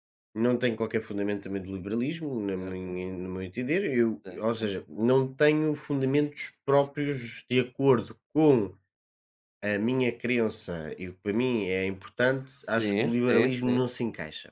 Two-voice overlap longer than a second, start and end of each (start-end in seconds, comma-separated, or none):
12.5-13.9